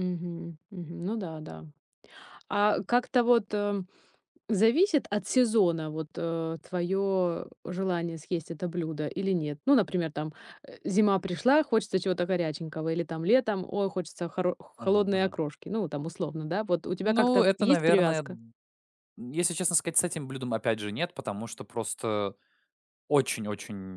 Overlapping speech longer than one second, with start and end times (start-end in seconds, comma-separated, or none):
17.0-18.4